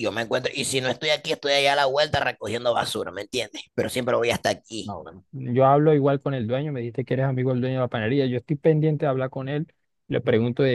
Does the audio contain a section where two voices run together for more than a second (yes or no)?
no